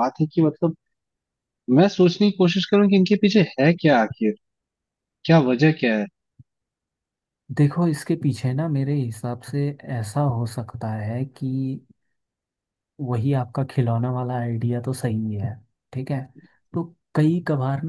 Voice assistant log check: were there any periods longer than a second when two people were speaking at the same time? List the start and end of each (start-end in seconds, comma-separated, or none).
none